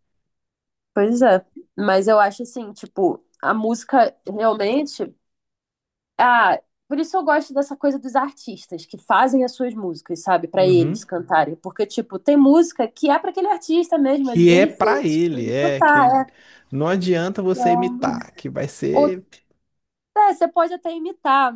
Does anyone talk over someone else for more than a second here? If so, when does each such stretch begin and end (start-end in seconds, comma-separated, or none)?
14.2-16.2